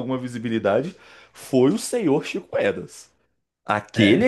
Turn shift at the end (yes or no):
no